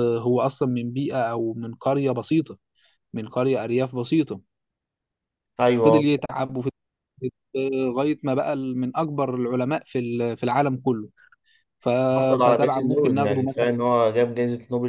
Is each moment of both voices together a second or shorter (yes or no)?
no